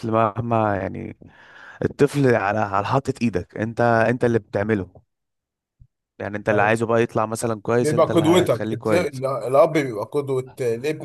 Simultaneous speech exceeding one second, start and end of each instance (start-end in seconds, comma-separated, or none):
7.8-9.2